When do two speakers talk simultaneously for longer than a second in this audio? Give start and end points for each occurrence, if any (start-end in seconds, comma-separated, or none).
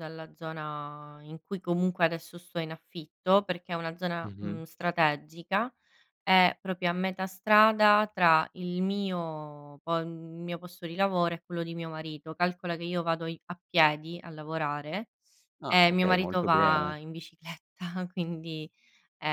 15.7-16.9